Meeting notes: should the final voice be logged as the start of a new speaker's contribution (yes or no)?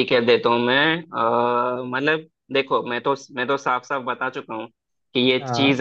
no